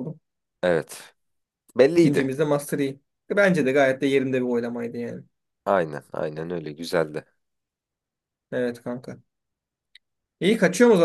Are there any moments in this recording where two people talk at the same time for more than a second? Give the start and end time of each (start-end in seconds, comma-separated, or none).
none